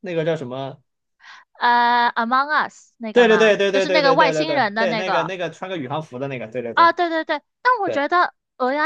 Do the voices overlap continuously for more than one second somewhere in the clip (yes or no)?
yes